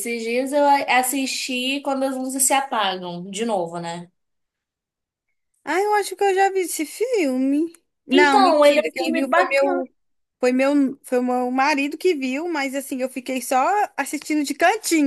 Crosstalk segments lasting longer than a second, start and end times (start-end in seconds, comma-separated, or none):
8.1-9.9